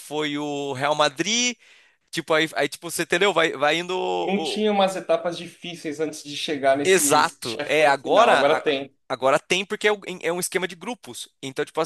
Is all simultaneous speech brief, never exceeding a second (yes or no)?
no